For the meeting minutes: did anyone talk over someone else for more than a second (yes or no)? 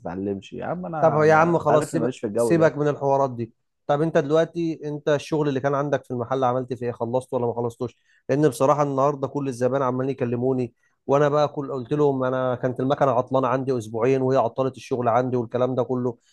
yes